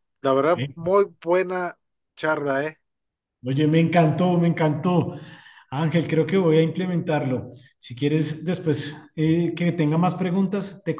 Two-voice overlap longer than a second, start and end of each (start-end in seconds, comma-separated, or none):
none